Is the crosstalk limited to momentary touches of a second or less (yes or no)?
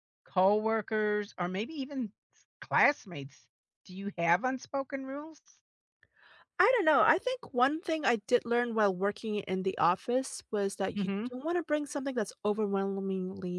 yes